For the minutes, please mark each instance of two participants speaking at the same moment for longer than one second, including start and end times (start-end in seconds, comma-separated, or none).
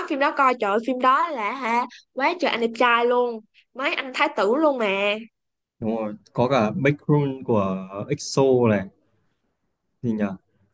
none